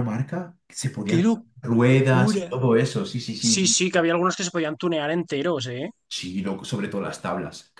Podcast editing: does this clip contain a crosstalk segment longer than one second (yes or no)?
yes